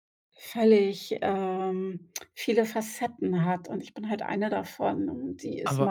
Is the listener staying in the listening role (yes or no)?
yes